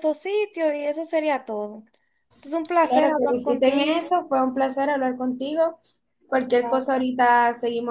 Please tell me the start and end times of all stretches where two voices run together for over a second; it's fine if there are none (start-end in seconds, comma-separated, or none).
2.8-4.0